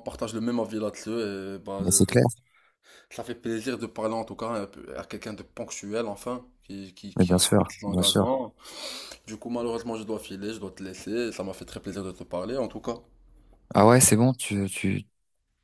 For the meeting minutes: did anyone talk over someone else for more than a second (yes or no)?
yes